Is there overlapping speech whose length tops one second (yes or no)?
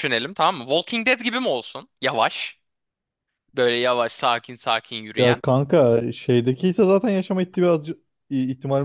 no